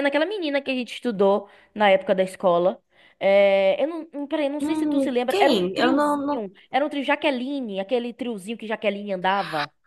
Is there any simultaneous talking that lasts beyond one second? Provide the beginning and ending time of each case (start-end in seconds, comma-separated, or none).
4.6-6.5